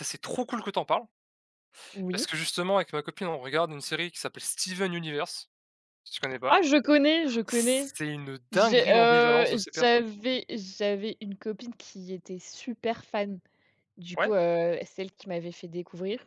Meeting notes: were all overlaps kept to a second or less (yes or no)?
no